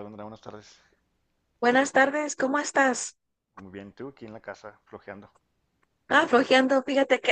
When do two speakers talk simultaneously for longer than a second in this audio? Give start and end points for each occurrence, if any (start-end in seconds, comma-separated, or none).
none